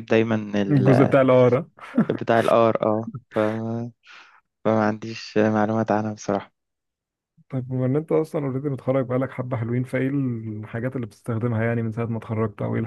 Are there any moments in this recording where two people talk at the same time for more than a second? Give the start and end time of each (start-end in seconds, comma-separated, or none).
none